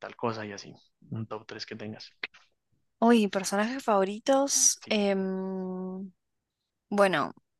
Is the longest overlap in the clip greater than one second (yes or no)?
no